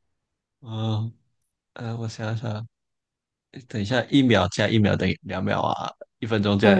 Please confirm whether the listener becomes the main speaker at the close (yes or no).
no